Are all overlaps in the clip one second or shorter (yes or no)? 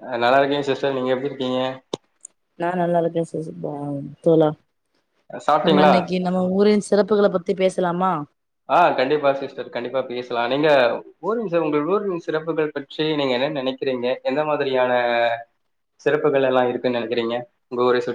yes